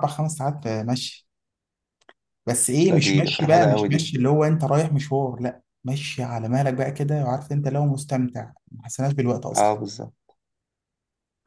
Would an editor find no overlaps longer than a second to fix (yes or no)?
no